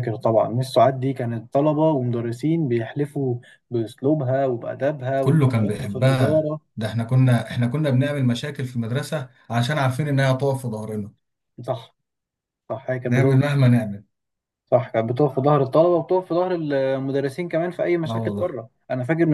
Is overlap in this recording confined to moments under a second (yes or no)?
no